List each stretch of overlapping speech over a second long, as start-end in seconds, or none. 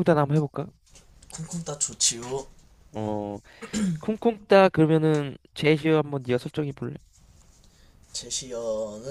none